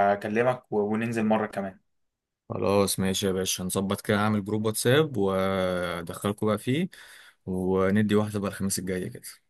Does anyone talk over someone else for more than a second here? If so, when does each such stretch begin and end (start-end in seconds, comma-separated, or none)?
none